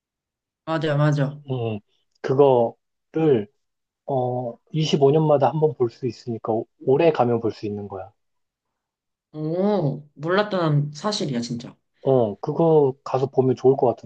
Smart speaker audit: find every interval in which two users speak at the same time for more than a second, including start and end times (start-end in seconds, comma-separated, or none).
none